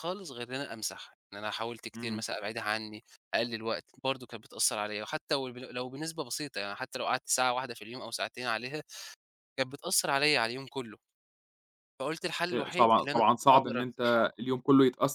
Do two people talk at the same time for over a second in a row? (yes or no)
yes